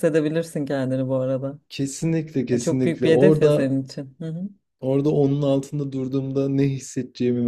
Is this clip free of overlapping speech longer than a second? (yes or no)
no